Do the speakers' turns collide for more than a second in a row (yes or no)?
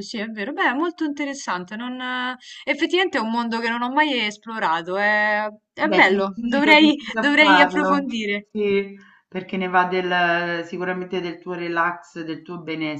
yes